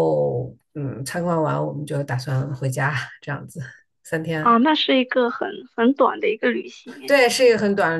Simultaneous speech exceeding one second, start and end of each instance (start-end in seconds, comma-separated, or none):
none